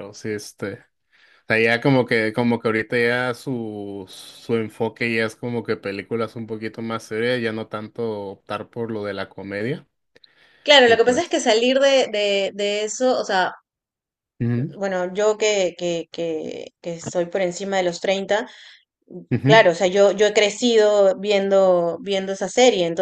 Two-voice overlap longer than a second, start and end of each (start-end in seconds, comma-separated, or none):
none